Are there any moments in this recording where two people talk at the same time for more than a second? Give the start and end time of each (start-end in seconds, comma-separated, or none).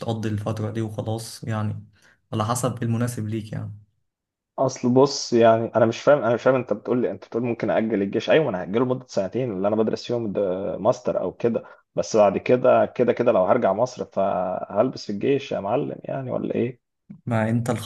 none